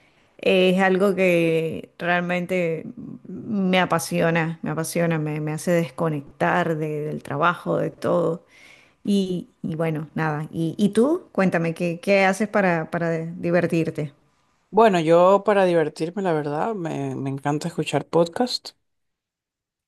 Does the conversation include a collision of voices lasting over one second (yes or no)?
no